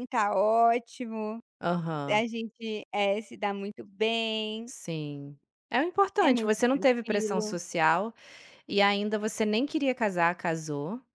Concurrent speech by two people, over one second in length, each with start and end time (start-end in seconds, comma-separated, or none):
6.3-7.5